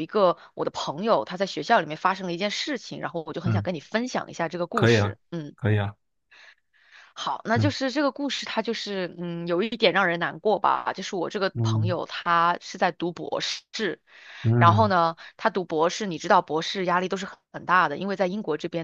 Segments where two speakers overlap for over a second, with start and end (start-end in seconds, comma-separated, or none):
none